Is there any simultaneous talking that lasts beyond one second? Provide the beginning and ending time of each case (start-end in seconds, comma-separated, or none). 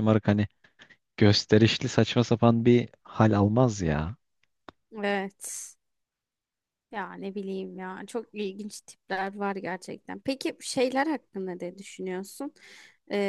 none